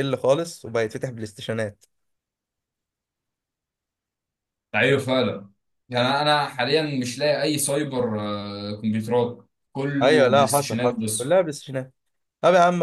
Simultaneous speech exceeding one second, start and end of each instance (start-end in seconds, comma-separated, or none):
10.0-11.2